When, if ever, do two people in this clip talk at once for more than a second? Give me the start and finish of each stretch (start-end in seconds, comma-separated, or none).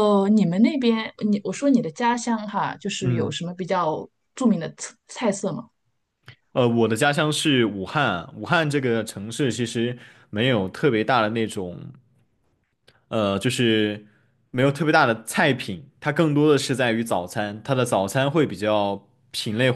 none